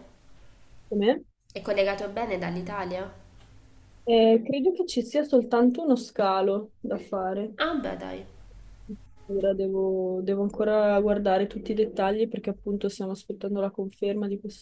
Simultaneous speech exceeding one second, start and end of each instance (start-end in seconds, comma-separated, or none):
none